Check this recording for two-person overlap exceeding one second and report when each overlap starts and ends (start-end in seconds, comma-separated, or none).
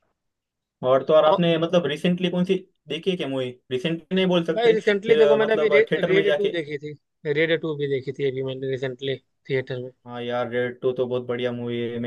4.5-6.6